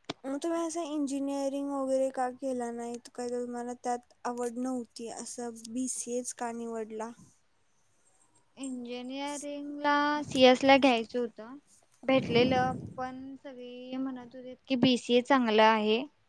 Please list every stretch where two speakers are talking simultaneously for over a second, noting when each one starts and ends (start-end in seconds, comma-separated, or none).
none